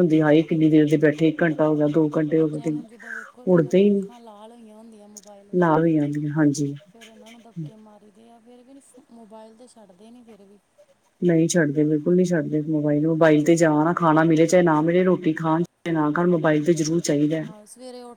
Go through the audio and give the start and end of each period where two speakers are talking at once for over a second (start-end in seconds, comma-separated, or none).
none